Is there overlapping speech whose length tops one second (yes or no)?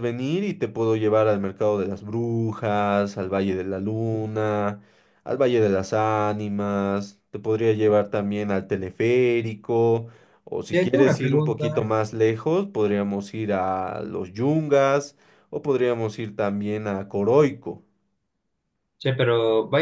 yes